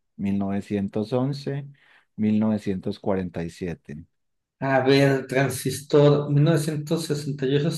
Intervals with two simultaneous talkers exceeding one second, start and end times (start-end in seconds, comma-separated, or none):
none